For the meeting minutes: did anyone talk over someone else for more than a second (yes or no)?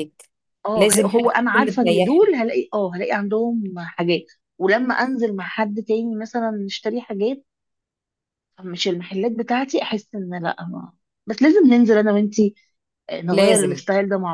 yes